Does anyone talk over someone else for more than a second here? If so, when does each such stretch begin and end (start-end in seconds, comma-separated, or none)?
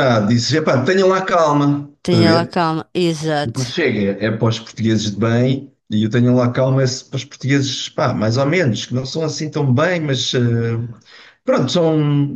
none